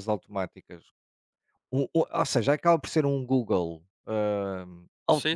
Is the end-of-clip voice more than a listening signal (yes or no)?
no